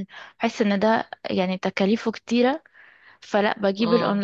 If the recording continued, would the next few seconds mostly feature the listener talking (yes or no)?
no